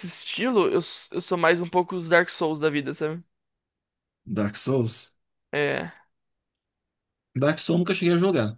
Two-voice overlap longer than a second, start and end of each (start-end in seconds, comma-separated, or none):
none